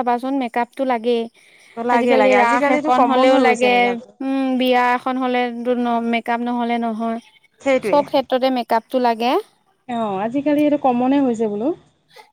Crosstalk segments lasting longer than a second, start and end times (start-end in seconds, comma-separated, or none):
2.0-3.7